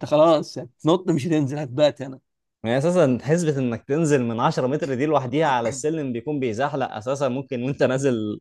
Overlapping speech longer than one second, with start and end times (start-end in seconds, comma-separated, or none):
none